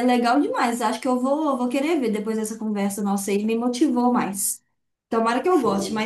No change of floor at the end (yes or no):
yes